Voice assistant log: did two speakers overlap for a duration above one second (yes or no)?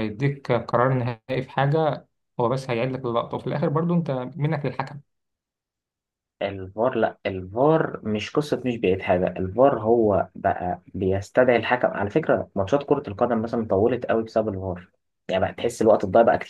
no